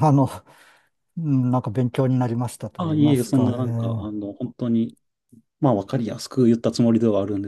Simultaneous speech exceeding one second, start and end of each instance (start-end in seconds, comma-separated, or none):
2.8-4.1